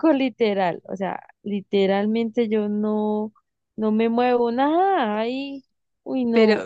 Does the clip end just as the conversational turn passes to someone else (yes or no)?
yes